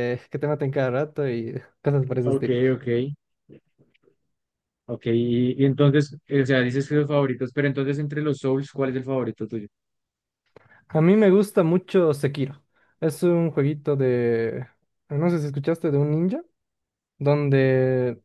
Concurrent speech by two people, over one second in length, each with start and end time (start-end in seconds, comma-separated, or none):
none